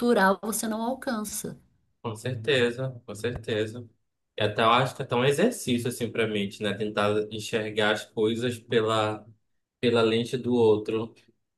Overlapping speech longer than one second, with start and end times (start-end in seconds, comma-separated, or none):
none